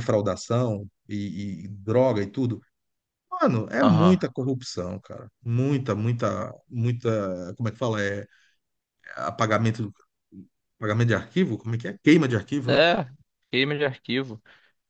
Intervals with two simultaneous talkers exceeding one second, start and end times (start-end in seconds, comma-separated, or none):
none